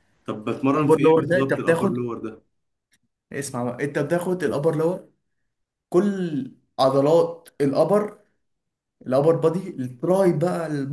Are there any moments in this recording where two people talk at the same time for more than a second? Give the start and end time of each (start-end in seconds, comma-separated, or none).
0.7-2.1